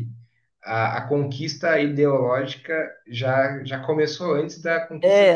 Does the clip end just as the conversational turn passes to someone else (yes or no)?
yes